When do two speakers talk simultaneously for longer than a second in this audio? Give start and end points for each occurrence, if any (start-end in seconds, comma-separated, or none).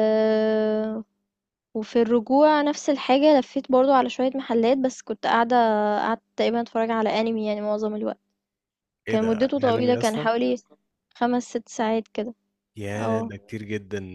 9.1-10.3